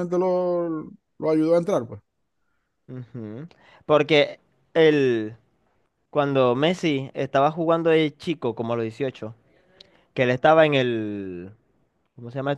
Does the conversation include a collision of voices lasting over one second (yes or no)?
no